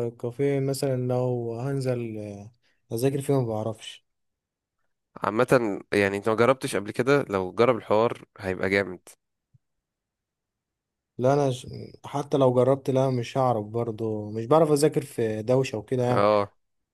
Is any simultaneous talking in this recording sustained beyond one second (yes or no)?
no